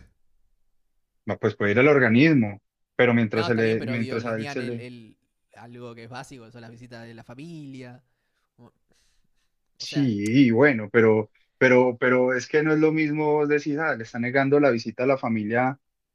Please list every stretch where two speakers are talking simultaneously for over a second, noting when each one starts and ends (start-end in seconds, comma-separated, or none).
3.3-4.8